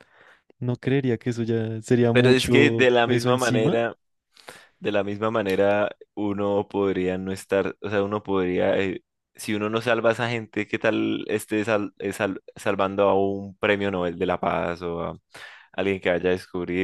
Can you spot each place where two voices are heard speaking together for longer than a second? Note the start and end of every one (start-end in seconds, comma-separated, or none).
2.1-3.8